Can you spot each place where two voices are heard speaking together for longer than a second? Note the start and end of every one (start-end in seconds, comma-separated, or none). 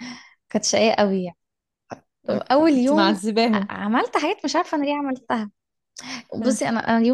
2.3-3.7